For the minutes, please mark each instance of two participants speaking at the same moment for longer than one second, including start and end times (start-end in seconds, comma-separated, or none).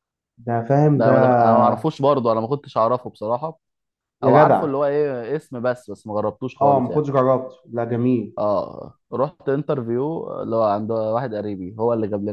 none